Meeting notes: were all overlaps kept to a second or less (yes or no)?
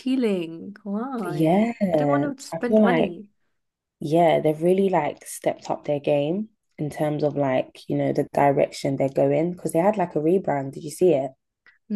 no